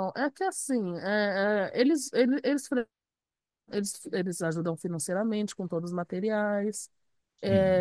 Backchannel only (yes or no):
yes